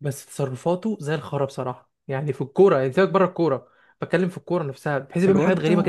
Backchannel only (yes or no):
no